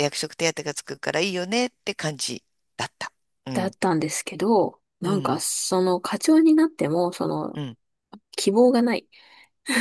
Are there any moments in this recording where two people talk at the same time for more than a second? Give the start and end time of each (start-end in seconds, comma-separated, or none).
none